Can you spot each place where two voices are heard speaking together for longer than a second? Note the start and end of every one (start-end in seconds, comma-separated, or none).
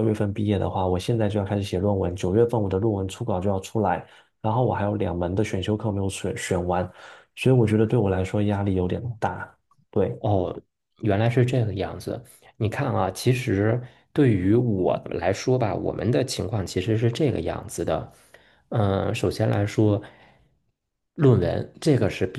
none